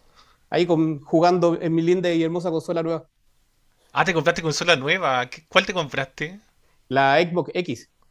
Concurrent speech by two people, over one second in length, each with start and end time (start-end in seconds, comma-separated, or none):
none